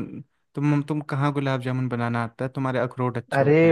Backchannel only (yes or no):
no